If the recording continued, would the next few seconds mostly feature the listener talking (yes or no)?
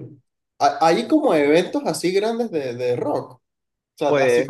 no